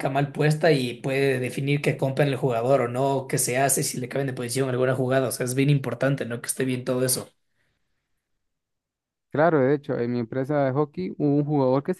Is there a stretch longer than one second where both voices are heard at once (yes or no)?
no